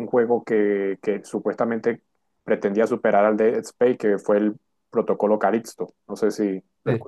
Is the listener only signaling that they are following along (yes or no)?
no